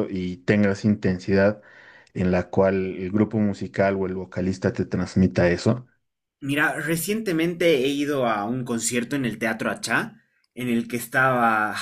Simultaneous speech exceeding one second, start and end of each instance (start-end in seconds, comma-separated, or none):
none